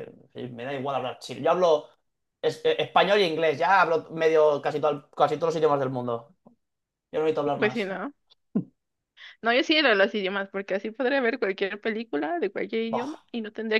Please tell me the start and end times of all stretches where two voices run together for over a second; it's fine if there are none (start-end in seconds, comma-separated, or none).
none